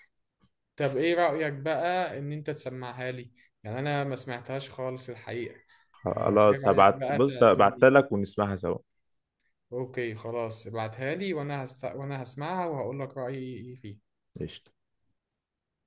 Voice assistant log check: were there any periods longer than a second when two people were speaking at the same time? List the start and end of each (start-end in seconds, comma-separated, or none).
6.1-7.9